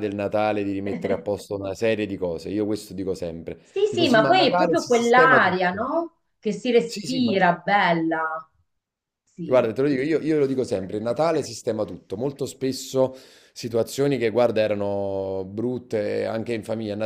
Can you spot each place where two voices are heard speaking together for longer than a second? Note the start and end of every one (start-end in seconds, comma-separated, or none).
3.6-5.8